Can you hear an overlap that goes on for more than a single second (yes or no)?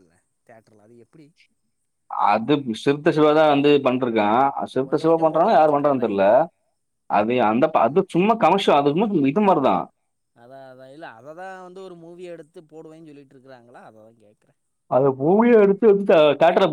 yes